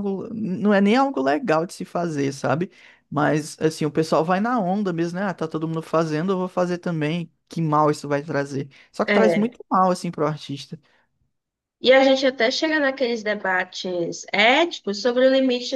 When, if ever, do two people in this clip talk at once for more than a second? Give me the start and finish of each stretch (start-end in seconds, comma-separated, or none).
none